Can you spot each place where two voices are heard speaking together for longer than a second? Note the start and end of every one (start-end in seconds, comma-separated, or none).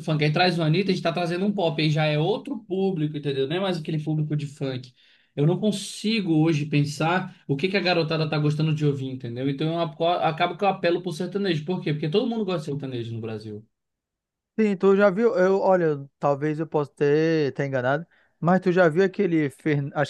none